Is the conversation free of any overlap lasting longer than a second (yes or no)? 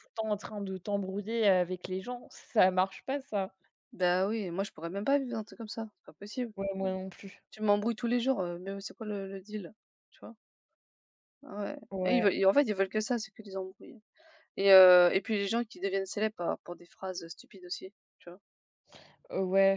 yes